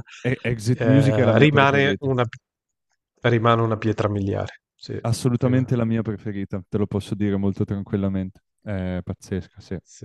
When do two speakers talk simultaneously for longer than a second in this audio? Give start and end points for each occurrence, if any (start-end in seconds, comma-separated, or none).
0.7-2.1